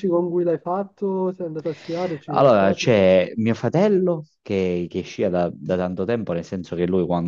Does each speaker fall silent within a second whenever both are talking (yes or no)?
yes